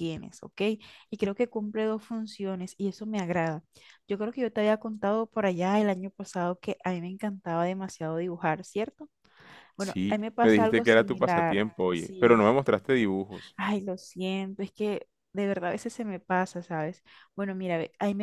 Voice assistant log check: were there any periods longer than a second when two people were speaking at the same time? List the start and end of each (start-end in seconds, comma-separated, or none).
9.8-12.4